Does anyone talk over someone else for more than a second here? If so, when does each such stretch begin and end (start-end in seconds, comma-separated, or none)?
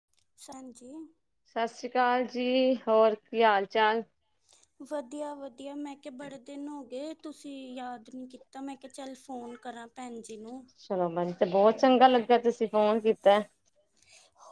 none